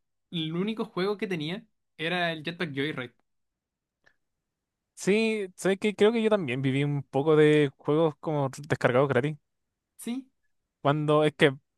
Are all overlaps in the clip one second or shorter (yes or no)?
yes